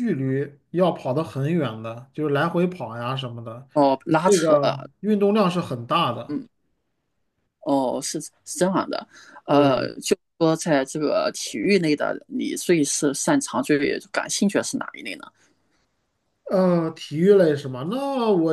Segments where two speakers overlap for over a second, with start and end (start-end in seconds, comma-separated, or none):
none